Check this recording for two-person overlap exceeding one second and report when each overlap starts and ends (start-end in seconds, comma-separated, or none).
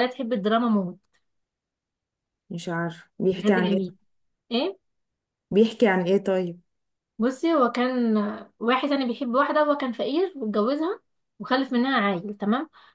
none